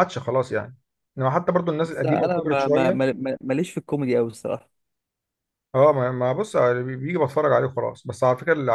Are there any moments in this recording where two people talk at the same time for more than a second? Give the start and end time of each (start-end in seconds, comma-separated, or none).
1.8-3.0